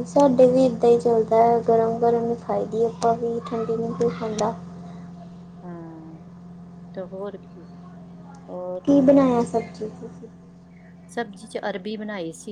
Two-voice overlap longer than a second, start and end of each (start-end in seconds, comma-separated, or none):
none